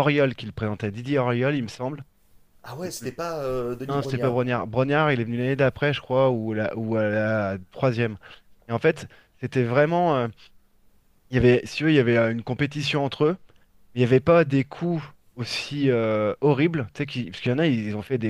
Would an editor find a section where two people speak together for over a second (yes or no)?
no